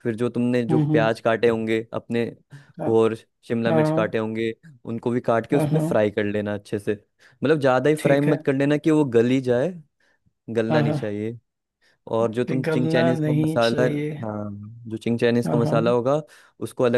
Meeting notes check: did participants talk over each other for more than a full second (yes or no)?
yes